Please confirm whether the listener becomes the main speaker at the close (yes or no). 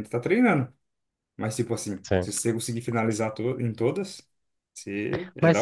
yes